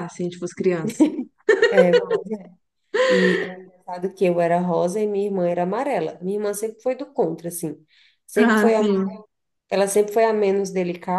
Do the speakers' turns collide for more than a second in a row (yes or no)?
no